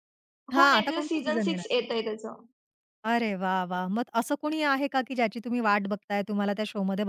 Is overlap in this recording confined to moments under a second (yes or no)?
no